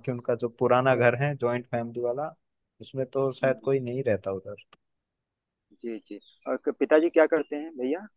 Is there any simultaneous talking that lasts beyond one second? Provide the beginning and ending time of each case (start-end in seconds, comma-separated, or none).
none